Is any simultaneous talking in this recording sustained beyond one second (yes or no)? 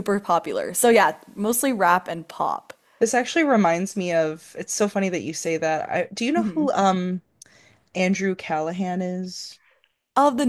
no